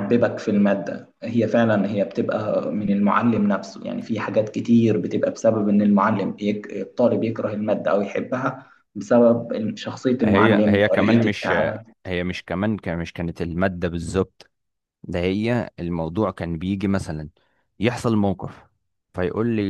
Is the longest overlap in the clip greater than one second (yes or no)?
yes